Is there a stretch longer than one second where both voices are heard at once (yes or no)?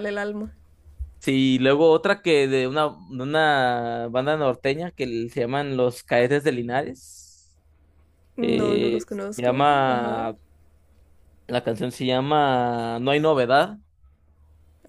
yes